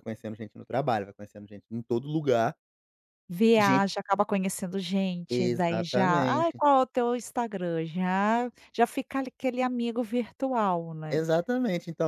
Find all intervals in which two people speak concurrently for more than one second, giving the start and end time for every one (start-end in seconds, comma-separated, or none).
5.3-6.6